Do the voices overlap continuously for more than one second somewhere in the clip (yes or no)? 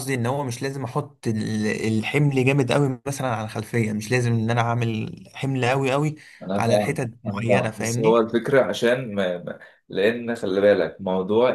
yes